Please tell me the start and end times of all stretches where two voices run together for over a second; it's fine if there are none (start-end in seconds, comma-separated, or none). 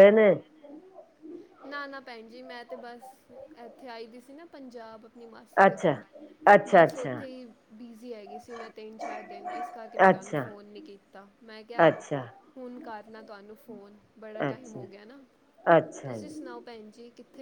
none